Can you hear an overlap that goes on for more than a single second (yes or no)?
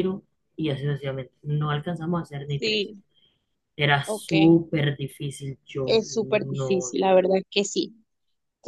yes